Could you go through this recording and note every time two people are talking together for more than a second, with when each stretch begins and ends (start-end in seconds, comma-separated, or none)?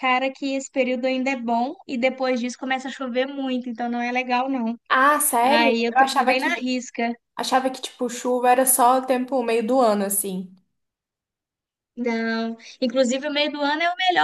5.4-6.7